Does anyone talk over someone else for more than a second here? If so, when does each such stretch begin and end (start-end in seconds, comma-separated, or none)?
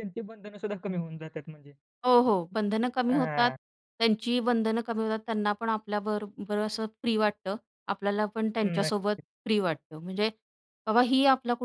none